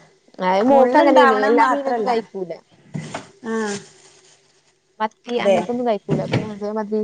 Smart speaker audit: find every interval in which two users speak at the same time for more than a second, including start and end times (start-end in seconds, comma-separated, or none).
0.7-2.1